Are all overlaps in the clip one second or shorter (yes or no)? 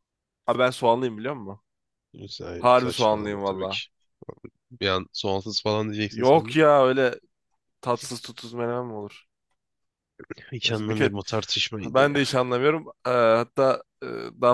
no